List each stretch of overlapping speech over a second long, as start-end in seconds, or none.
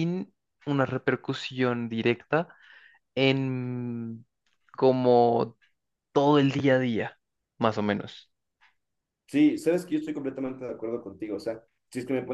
none